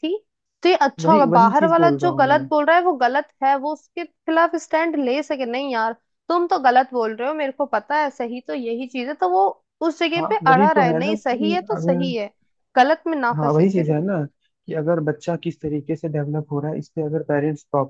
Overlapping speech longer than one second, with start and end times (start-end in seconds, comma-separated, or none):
1.0-2.4, 10.2-12.0